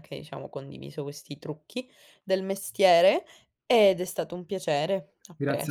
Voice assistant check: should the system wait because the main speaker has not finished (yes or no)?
no